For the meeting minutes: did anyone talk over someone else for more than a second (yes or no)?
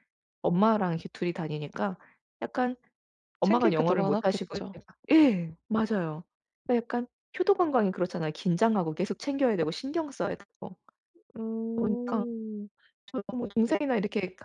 yes